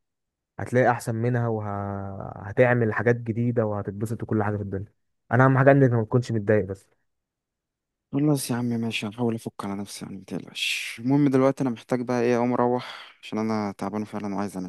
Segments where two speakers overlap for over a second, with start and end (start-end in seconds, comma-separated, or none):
none